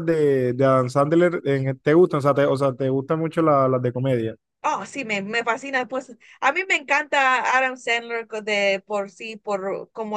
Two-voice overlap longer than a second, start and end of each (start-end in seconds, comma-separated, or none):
none